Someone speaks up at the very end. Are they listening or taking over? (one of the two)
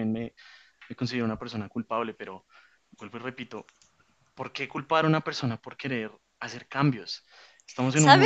taking over